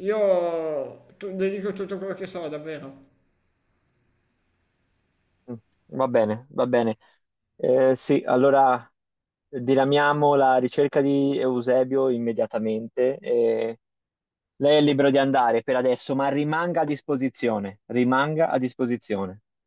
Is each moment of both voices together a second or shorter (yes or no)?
yes